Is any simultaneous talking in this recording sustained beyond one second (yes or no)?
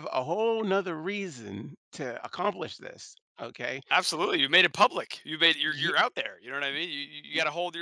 no